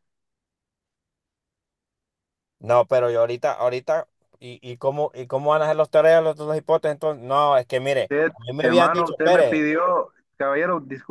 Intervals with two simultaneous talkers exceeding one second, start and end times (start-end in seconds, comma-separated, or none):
8.0-9.7